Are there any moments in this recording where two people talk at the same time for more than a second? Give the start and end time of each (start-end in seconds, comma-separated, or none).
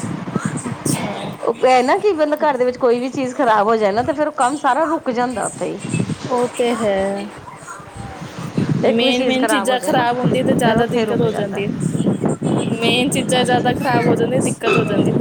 8.9-11.7